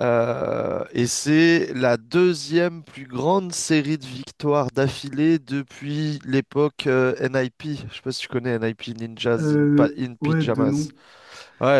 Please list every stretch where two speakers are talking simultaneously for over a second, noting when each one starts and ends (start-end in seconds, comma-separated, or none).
9.4-10.9